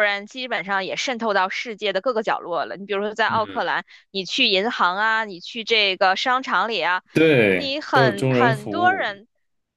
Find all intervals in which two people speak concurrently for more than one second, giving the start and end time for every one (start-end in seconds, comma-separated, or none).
7.5-9.2